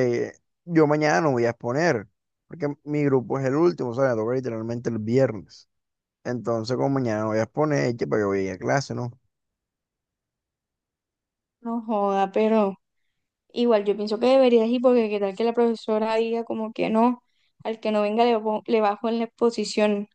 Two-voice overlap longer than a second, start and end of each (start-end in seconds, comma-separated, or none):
none